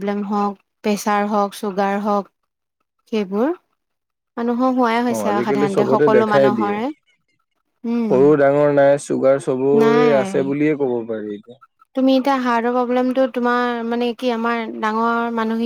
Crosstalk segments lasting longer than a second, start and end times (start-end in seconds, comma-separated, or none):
5.1-6.8